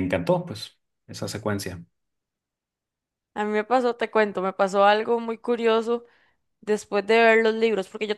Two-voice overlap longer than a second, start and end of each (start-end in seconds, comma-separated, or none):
none